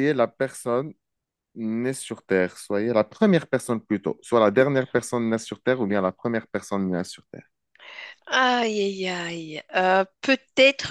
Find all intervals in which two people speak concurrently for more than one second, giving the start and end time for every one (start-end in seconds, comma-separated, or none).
none